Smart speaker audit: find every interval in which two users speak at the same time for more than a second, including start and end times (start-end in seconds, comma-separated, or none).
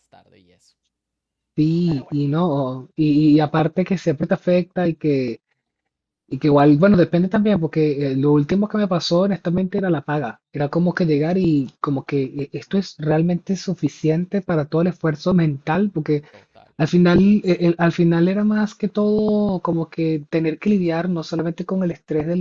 none